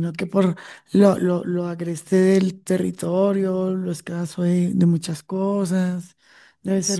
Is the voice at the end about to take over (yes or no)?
no